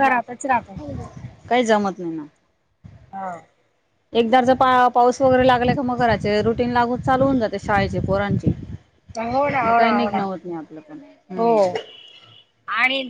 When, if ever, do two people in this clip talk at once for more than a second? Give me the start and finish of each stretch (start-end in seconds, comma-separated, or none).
none